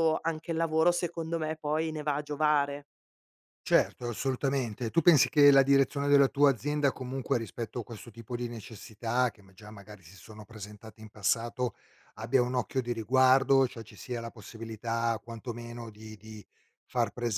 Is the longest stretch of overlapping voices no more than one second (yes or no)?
yes